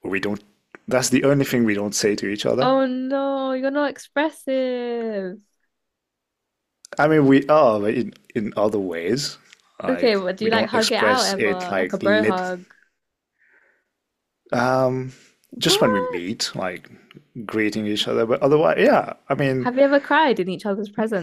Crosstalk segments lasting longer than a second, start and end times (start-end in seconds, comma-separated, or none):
9.9-12.4